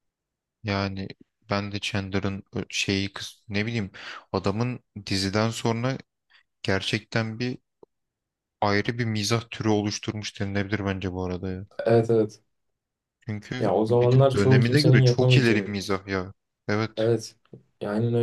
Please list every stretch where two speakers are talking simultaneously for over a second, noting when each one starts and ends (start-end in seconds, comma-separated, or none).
13.6-15.8